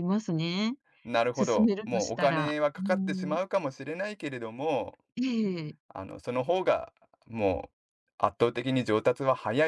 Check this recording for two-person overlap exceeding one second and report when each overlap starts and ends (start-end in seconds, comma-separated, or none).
1.4-3.4